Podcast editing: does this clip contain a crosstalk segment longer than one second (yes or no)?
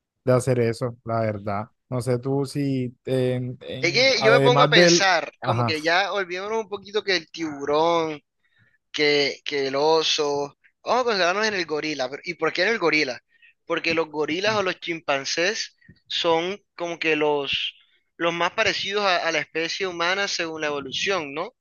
yes